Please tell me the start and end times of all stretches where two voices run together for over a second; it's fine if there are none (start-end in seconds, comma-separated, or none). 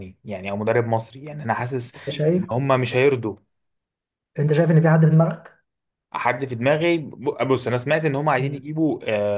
none